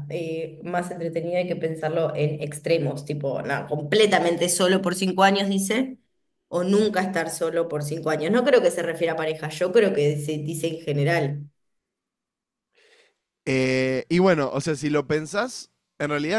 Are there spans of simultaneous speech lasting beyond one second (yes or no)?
no